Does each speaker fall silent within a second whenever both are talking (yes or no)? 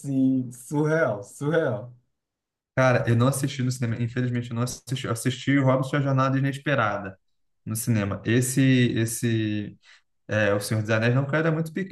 yes